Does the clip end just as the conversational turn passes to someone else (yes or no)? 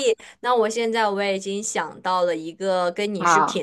no